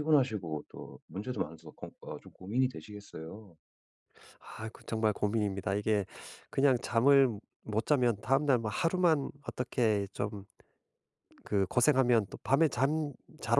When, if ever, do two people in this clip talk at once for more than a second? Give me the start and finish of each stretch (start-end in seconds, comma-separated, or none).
none